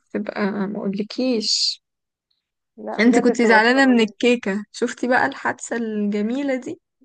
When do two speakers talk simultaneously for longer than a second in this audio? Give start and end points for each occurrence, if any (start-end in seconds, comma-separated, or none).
3.0-4.3